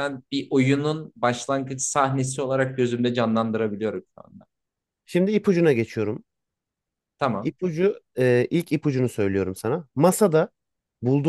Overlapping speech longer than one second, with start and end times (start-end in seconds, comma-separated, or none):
none